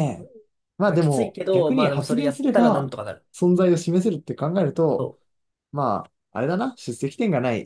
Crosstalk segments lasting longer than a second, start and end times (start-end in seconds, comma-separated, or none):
0.8-2.9